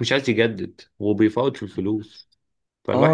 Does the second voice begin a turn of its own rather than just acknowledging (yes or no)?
yes